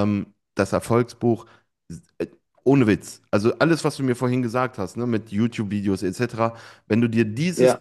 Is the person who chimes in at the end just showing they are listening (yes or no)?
yes